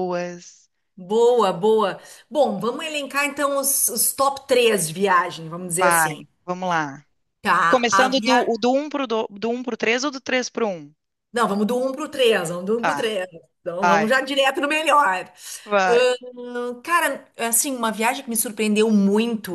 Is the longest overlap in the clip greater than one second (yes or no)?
no